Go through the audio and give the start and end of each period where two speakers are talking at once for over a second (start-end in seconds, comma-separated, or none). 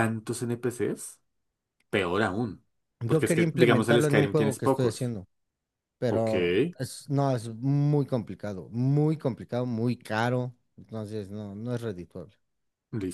3.1-5.1